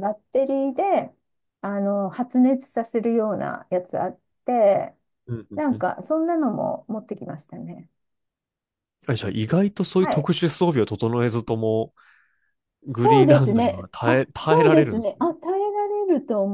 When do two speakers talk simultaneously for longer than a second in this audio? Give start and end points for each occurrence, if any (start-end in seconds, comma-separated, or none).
13.0-15.2